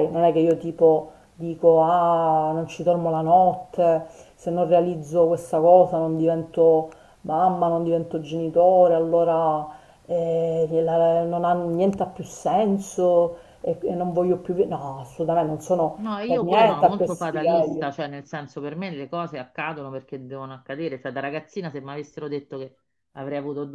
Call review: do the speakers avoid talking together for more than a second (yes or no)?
no